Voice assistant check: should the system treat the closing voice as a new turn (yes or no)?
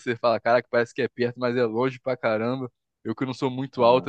no